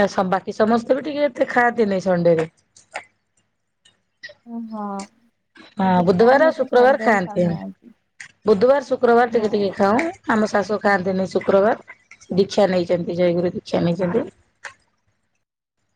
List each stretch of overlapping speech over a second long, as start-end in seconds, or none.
5.8-7.5